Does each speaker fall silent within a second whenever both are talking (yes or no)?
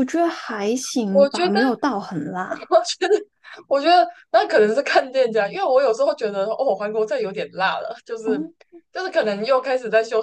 yes